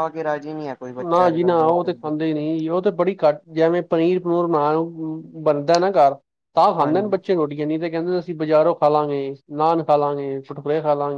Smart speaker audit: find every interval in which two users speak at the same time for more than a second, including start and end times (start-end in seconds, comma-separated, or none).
none